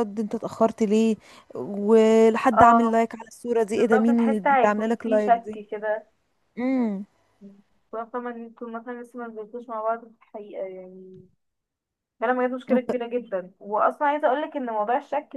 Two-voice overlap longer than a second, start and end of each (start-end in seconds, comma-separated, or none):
3.7-5.6